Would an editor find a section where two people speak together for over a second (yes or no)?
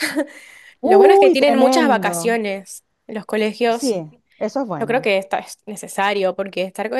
yes